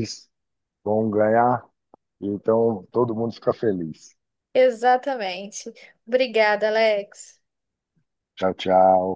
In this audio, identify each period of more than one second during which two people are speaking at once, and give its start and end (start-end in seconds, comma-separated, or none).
none